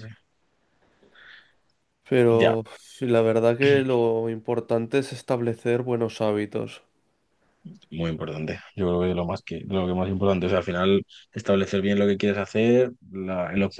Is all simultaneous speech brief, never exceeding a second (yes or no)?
yes